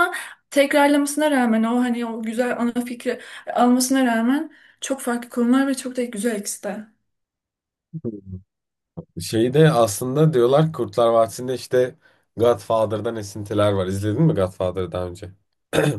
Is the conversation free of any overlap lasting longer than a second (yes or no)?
yes